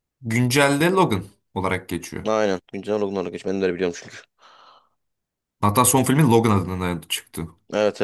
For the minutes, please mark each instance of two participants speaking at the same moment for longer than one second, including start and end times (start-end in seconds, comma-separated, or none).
none